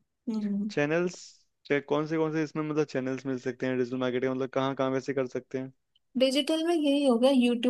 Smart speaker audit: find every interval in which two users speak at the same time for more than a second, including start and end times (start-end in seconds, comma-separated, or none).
none